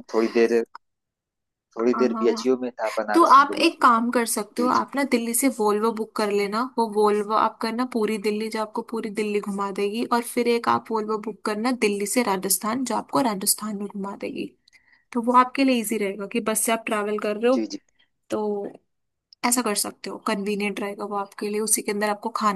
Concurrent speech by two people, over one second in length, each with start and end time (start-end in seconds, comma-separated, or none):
3.1-4.8